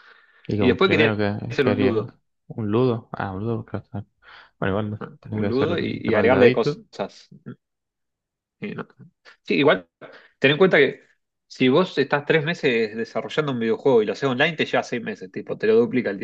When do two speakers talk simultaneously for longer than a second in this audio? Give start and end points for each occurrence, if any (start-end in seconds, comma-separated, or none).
0.6-2.1, 5.0-6.8